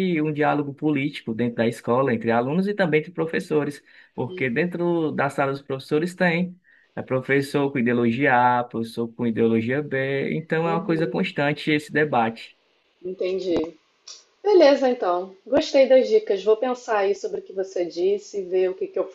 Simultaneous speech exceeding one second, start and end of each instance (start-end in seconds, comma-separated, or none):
none